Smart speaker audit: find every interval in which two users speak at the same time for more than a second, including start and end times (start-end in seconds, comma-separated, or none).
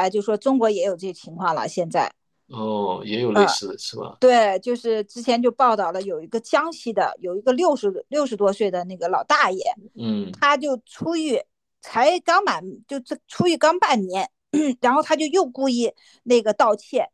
none